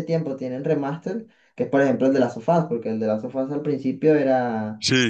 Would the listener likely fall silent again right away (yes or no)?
yes